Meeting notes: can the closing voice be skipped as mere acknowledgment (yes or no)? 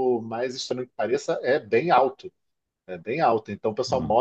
yes